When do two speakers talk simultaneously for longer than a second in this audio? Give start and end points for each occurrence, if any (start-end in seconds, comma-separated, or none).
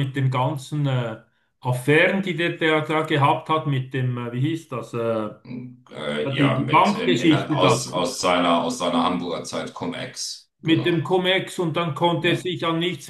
6.4-7.8